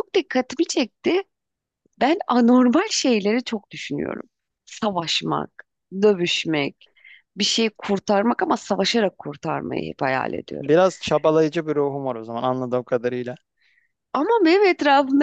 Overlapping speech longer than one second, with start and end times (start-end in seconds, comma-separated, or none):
none